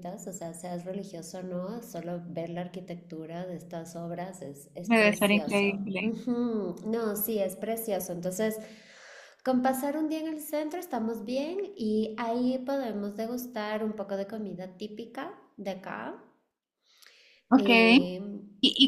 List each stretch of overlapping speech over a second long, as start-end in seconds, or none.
4.8-6.1